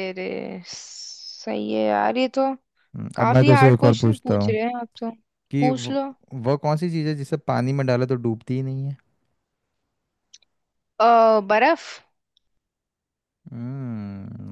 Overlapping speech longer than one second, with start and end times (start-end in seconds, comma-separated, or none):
3.2-4.5